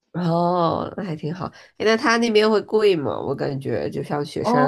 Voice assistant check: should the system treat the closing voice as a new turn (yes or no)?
yes